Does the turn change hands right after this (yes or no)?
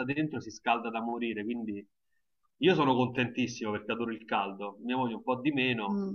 yes